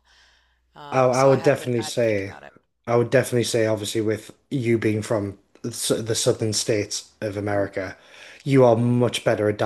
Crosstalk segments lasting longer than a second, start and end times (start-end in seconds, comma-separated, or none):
0.9-2.3